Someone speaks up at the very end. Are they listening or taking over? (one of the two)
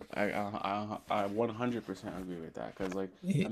listening